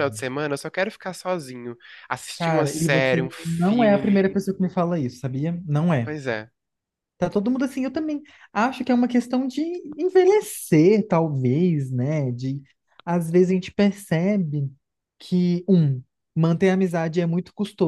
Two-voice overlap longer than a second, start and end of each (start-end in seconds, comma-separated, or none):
2.4-4.2